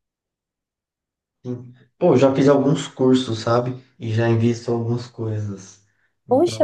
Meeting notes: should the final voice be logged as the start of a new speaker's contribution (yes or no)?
yes